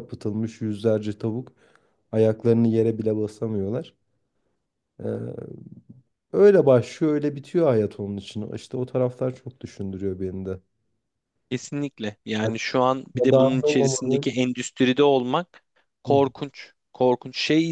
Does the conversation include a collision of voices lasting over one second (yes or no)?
yes